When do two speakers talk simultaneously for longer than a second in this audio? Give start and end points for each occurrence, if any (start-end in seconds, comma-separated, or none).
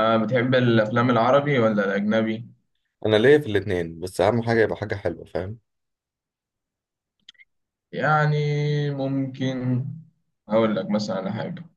none